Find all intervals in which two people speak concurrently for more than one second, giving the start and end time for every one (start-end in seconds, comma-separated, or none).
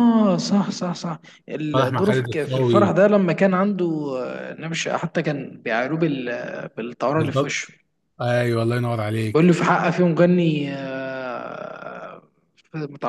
1.7-3.0